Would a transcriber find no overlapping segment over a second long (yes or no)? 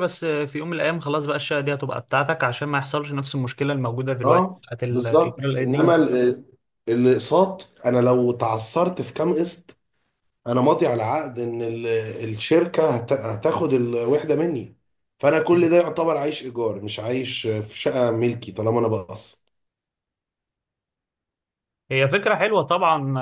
no